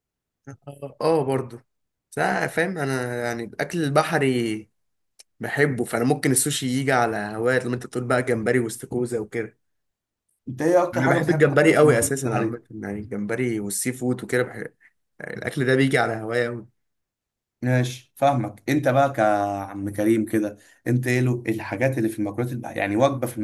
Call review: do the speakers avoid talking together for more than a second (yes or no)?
no